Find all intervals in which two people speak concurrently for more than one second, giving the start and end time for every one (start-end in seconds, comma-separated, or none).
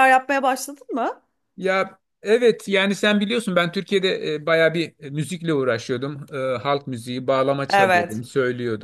none